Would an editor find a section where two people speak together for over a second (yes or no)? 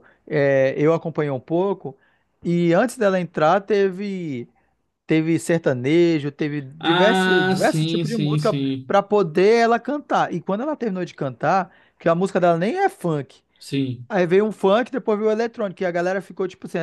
yes